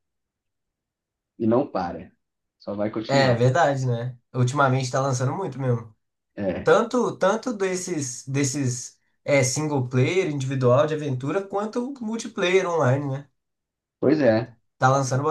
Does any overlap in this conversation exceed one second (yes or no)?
no